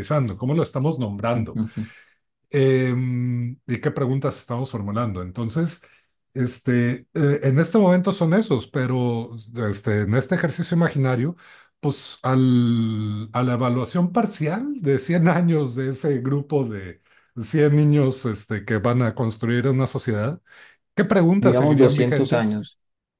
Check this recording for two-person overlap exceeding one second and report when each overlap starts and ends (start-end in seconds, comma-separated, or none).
21.4-22.6